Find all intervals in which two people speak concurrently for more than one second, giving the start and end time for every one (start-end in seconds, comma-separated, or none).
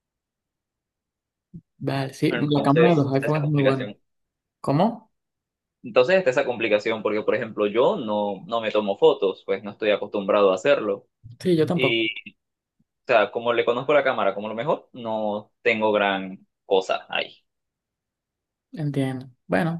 2.3-3.9